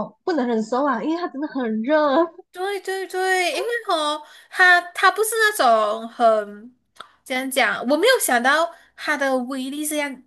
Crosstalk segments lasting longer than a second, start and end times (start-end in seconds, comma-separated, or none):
none